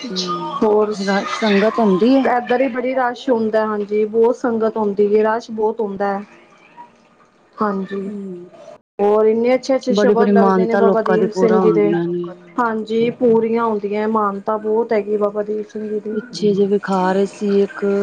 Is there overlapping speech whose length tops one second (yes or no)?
yes